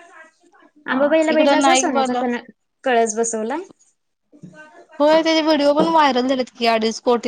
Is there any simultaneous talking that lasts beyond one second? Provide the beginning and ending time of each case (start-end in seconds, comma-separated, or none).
0.9-2.2